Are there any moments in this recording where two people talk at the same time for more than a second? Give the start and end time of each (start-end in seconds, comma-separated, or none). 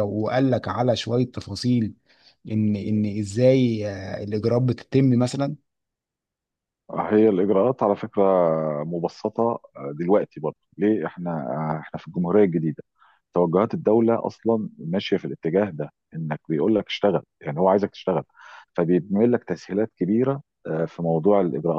none